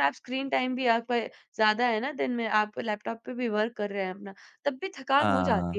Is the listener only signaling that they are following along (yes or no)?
yes